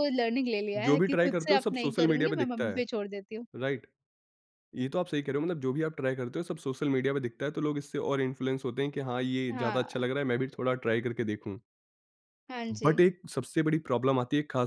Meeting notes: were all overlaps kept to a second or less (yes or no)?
no